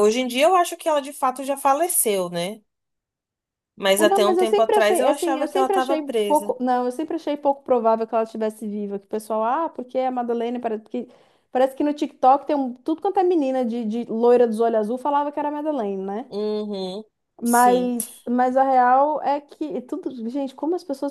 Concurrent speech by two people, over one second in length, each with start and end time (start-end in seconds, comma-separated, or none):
4.0-6.6